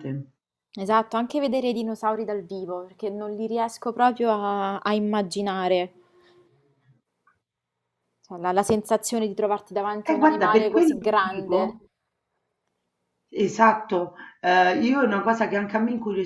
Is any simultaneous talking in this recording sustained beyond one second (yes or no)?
yes